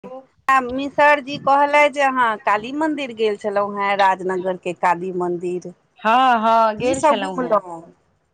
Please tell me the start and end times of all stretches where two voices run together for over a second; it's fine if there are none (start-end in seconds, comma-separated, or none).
6.0-7.6